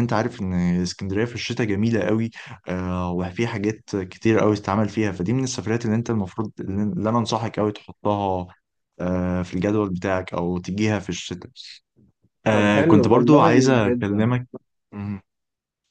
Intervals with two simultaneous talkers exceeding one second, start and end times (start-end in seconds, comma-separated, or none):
12.5-14.3